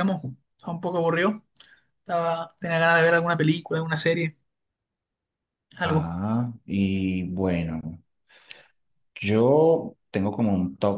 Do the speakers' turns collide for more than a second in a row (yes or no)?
no